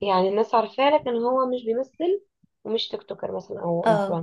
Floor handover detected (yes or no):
yes